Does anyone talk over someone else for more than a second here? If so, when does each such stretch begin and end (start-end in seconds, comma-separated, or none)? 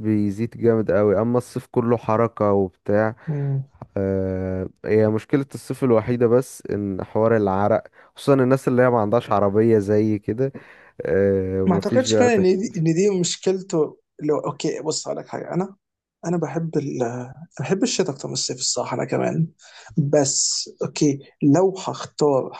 11.7-12.9